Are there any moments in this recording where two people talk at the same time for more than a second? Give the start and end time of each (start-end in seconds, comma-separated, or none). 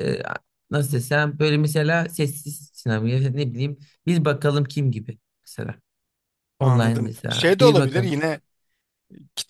6.6-8.2